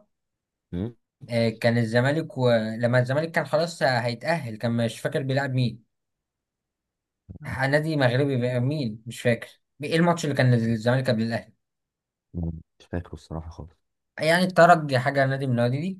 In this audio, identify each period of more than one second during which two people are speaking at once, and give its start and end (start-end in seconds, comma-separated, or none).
none